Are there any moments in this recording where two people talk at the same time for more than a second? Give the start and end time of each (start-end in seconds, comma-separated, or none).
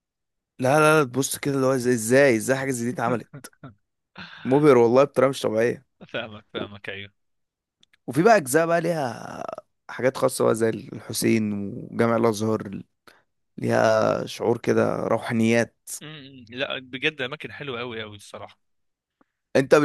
none